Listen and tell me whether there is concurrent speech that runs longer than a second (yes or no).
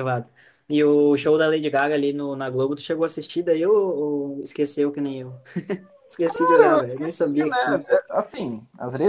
yes